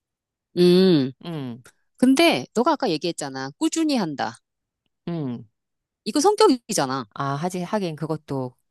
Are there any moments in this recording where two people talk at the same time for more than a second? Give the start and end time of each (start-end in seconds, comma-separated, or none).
none